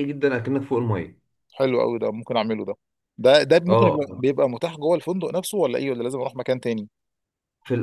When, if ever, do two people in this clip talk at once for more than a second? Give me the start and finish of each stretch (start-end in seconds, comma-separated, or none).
none